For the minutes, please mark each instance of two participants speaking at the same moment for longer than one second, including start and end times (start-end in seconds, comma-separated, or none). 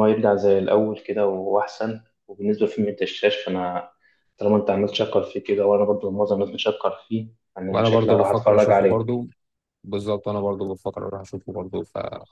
7.7-9.2